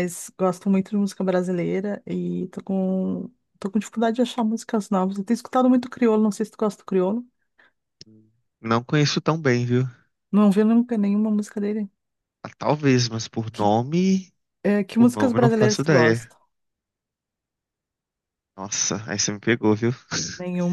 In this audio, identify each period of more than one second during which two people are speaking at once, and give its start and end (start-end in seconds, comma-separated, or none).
15.0-16.3